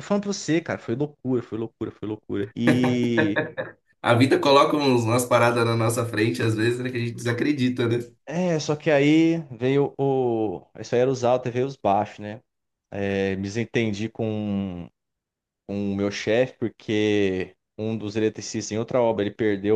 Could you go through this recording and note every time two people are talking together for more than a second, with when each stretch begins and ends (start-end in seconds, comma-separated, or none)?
none